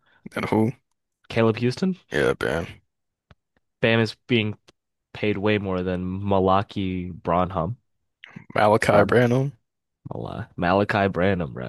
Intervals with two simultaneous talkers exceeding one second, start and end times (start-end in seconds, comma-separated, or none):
none